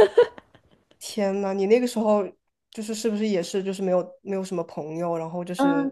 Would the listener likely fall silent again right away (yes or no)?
no